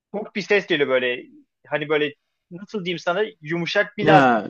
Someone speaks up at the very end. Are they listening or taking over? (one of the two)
listening